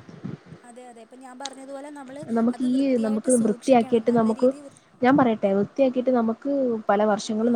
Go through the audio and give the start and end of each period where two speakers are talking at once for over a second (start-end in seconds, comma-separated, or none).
2.4-4.5